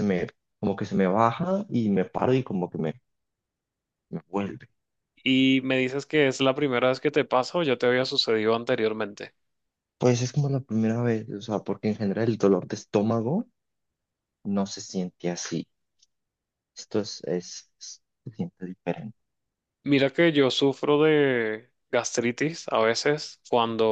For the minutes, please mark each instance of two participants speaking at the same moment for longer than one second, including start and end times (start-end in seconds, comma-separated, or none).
none